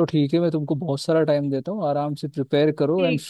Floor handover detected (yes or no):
no